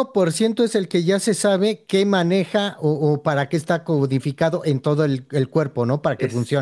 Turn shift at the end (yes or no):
yes